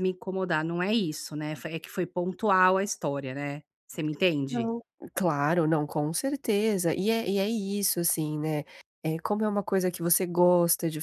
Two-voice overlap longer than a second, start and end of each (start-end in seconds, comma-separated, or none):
none